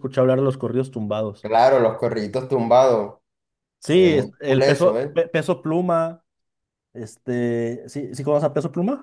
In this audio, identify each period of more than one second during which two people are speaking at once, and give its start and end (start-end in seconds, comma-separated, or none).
3.9-5.2